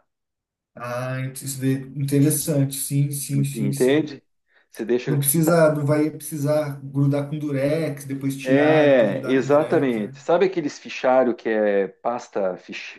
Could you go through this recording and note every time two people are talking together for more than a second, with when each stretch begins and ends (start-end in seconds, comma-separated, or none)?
8.4-10.2